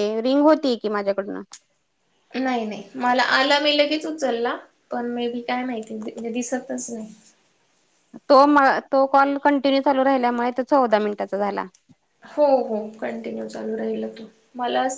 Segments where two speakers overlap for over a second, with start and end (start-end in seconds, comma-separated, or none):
none